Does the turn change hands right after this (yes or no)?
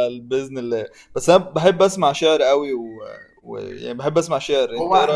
yes